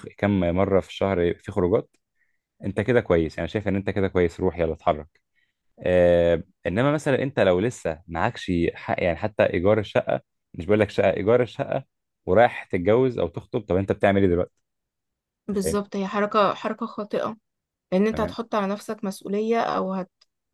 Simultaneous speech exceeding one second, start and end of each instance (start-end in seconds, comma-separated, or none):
none